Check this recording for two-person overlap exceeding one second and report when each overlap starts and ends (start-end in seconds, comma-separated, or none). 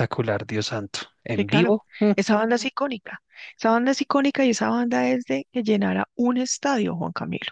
none